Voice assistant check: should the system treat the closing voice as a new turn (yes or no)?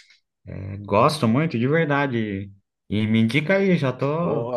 yes